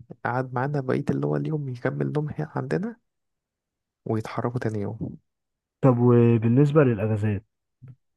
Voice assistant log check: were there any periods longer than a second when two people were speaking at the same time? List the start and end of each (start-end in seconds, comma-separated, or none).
none